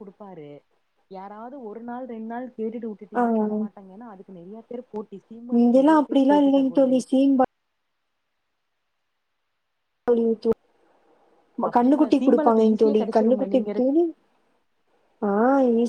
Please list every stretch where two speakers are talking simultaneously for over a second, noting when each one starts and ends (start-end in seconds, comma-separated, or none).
11.8-13.9